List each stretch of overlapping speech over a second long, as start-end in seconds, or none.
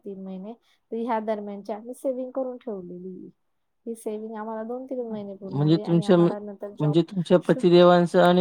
5.7-7.5